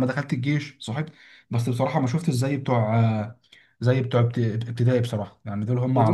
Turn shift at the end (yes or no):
yes